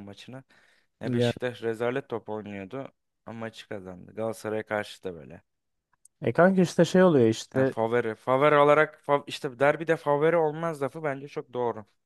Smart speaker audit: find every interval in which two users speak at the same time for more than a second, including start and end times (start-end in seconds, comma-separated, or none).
none